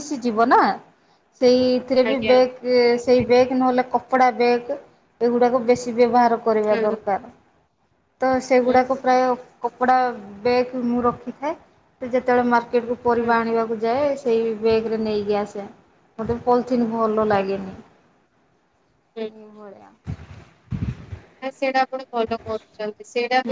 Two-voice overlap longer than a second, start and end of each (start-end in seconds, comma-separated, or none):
none